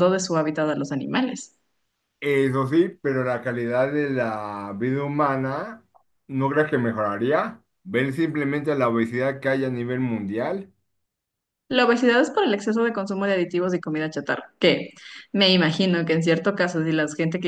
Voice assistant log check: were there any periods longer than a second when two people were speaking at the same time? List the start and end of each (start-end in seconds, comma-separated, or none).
none